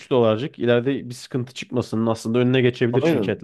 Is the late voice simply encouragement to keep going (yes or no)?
no